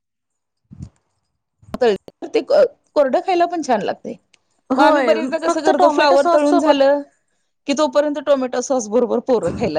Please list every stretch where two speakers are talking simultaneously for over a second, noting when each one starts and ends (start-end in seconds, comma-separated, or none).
4.8-6.8